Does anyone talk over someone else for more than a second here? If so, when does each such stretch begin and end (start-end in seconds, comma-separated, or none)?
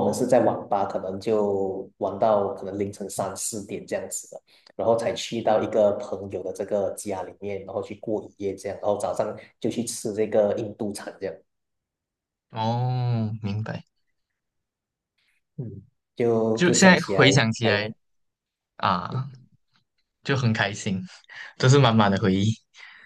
16.5-17.9